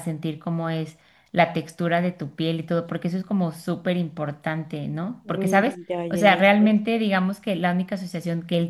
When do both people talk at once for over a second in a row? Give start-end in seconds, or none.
5.2-6.8